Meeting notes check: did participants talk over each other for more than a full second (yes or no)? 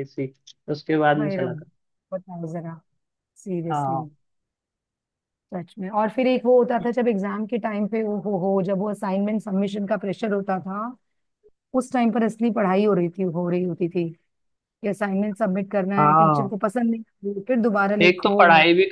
no